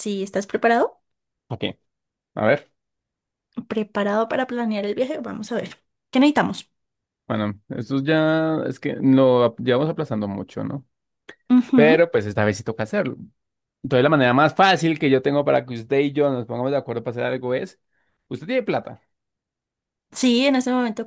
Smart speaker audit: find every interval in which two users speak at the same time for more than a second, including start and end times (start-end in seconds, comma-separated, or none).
none